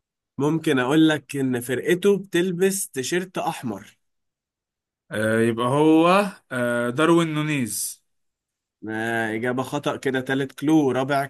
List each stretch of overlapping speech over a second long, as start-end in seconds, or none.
none